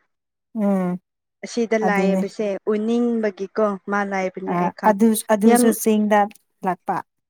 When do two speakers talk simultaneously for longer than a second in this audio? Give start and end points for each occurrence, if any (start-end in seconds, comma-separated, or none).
none